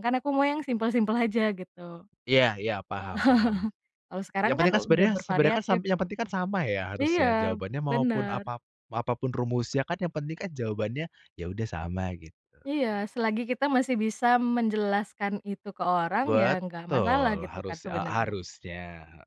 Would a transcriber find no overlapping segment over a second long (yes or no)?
no